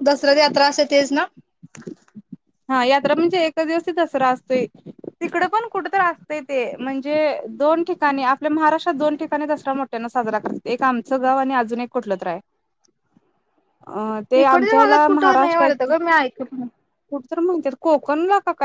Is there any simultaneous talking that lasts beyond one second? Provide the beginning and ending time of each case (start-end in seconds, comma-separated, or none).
14.4-15.7